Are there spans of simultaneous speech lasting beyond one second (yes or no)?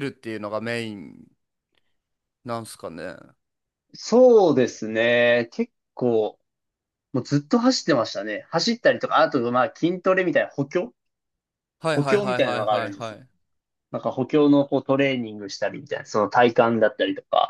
yes